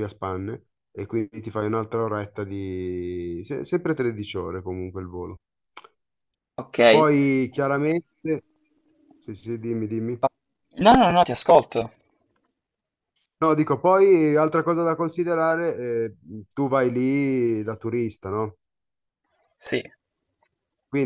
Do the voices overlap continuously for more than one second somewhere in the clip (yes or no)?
no